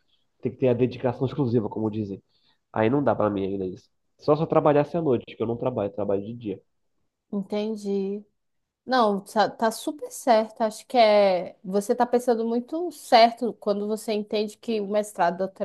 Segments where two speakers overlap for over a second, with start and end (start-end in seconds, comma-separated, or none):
none